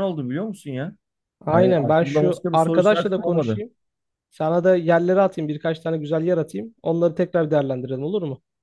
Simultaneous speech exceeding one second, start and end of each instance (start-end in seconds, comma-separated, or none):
1.5-3.6